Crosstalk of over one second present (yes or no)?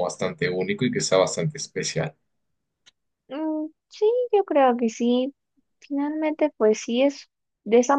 no